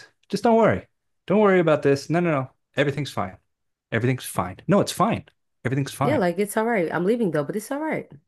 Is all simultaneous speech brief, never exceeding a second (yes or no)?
yes